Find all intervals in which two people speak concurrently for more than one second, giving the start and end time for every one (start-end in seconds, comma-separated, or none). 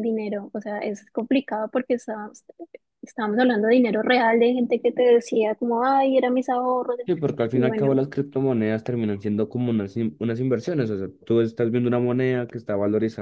none